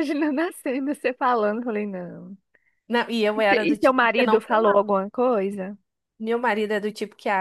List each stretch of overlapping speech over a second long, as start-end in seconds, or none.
3.3-4.8